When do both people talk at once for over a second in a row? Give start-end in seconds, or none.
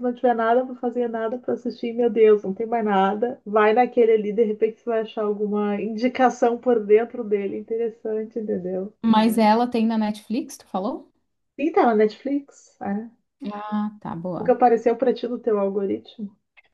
none